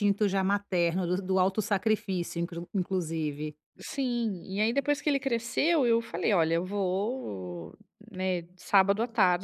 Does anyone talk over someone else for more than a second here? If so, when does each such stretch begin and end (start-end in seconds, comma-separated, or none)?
none